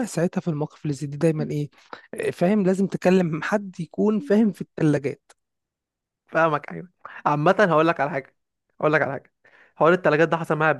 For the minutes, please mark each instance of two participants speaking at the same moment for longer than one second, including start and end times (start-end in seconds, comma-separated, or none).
none